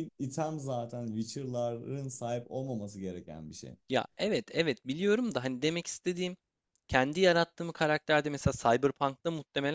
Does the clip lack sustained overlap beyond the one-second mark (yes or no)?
yes